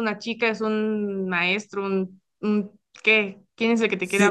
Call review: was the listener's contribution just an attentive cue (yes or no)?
no